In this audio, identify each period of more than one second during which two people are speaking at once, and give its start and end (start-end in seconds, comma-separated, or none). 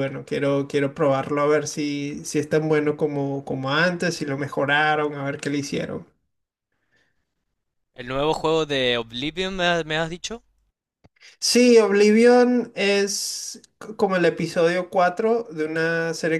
none